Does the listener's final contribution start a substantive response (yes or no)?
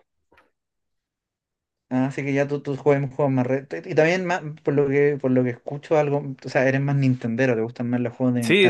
yes